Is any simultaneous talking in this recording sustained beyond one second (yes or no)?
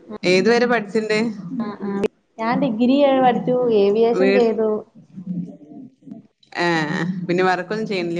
no